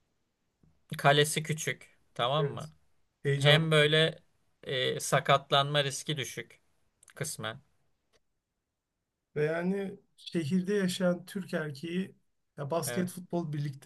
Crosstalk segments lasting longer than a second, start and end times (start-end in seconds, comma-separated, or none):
none